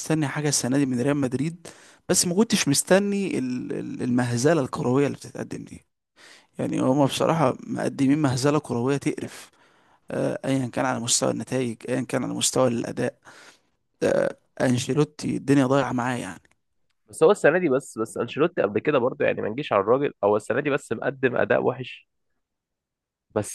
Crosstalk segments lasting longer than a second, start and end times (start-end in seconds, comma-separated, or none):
none